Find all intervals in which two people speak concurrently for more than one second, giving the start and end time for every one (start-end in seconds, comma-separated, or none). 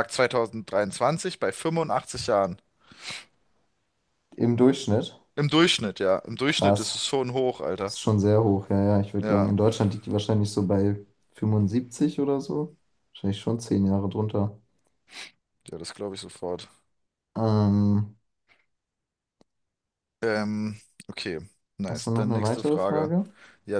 21.9-23.1